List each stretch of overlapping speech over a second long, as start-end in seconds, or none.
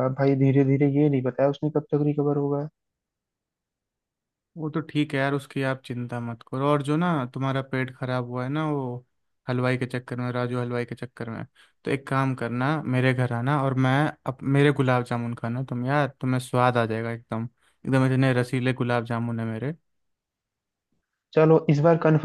none